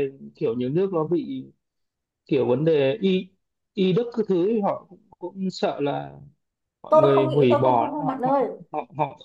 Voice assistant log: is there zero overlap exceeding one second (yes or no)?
no